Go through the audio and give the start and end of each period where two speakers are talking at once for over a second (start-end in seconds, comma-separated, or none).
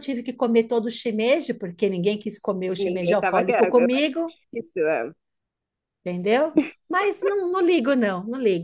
2.8-4.1